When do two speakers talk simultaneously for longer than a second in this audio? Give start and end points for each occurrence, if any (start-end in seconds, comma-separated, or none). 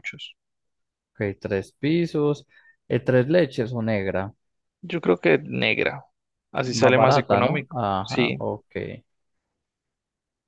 6.7-8.4